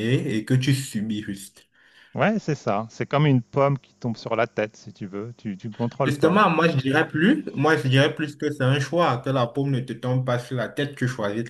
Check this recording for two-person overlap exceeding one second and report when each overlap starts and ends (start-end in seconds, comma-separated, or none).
none